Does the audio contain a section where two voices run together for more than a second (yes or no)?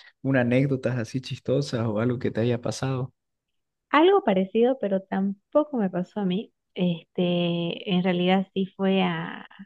no